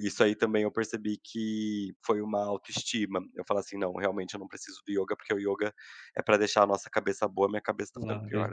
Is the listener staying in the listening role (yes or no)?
no